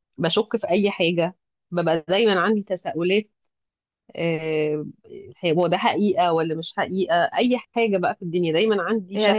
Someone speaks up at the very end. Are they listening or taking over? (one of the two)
taking over